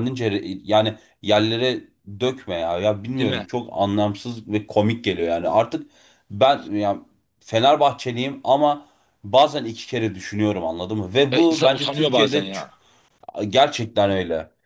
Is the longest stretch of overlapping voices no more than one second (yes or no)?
no